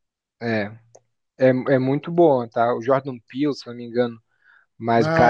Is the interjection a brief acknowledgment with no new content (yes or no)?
no